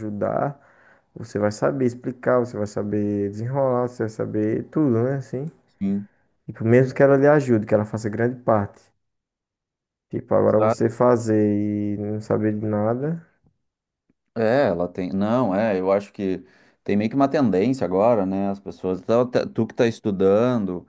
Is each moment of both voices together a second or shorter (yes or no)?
yes